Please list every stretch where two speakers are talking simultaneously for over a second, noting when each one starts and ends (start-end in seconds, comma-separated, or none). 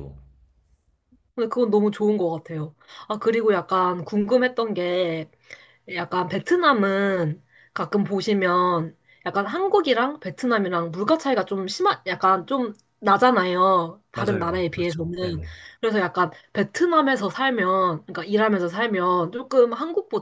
14.1-15.4